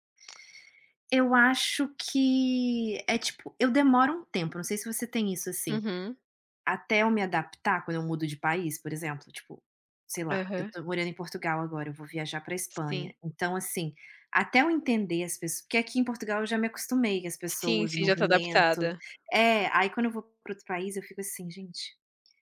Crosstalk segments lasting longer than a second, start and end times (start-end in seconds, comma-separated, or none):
17.6-18.9